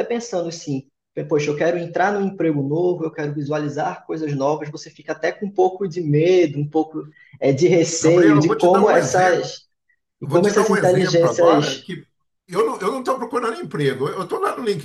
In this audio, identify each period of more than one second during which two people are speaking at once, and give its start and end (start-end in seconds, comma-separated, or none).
8.0-9.5, 10.2-11.9